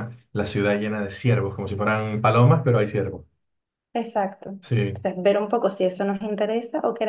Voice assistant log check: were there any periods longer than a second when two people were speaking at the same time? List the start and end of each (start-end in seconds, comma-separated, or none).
none